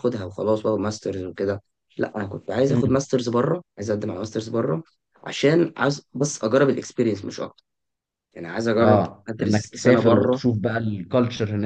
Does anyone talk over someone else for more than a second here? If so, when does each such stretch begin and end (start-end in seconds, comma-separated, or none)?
8.8-10.4